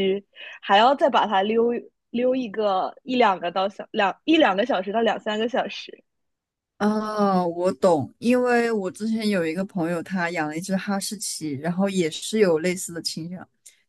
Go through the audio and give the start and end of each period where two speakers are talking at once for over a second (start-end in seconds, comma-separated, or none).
none